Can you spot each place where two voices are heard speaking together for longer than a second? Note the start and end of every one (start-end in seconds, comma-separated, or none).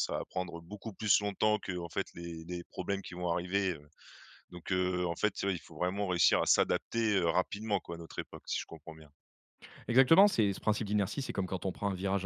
none